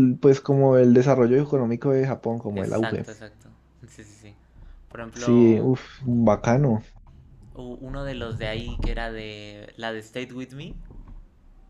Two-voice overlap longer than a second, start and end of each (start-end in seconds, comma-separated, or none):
none